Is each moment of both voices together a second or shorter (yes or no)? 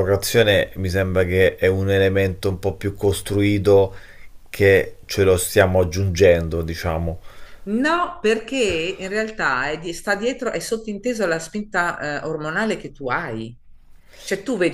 yes